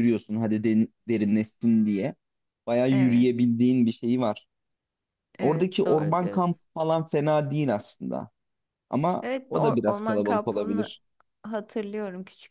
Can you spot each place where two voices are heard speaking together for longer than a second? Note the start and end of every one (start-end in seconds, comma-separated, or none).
5.4-6.6, 9.2-10.9